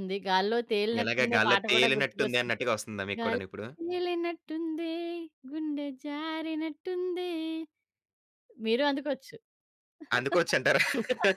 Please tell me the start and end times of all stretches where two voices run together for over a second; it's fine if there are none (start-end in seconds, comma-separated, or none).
1.0-2.5